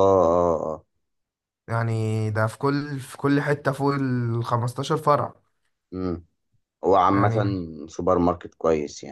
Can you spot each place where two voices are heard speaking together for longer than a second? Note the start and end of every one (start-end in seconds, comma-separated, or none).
none